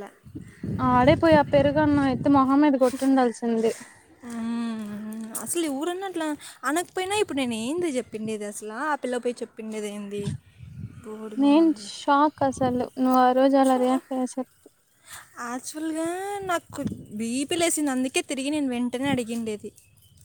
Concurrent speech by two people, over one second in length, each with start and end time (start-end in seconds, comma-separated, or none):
none